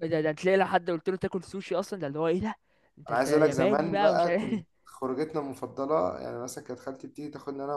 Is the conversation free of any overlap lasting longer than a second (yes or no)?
no